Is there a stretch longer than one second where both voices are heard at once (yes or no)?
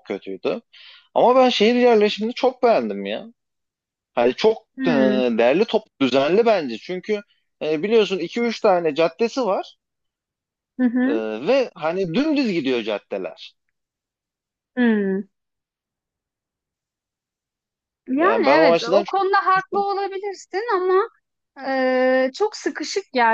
yes